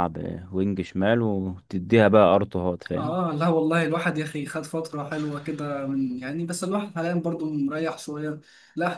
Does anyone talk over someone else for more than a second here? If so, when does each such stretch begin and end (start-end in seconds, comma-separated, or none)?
none